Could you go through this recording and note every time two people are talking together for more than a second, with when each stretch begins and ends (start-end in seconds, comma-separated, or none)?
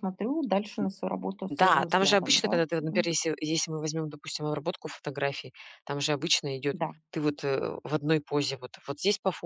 1.5-3.1